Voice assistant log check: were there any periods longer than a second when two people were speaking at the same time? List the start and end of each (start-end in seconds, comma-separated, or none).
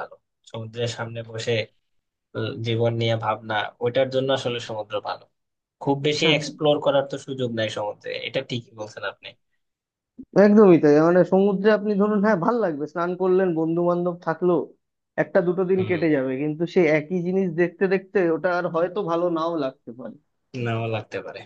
none